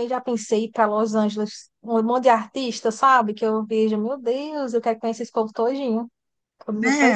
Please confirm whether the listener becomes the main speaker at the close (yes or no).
yes